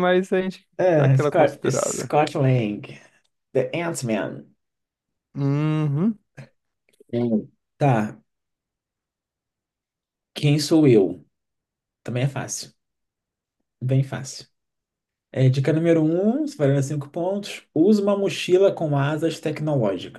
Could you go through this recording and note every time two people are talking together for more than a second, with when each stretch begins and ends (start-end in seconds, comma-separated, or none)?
0.8-2.1